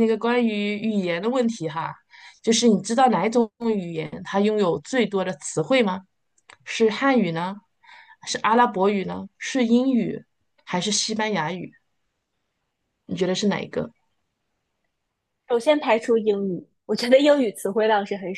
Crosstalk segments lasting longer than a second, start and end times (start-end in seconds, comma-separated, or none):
none